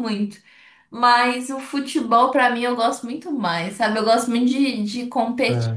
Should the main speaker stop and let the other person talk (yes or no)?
no